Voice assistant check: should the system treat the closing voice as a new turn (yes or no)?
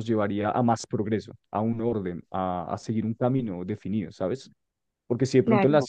no